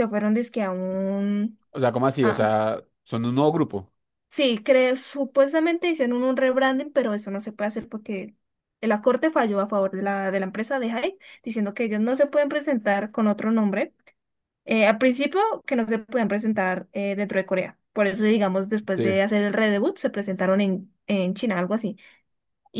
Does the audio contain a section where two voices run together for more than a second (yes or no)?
no